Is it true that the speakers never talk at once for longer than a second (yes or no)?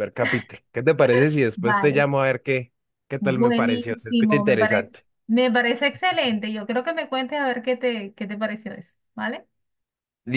no